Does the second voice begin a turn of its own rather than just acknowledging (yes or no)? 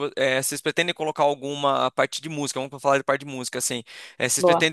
no